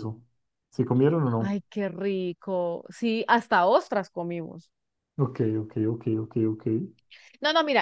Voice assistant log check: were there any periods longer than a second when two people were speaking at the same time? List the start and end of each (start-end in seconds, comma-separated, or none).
none